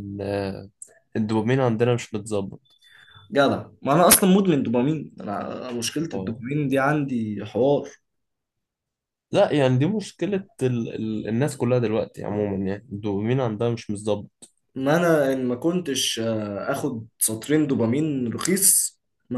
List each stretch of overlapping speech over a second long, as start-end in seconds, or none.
none